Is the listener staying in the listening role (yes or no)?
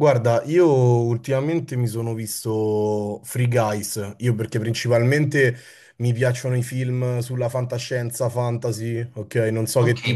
no